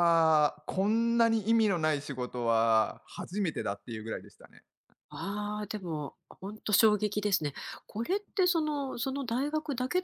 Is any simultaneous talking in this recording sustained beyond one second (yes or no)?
no